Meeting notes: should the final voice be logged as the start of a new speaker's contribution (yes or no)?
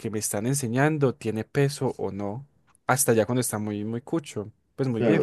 yes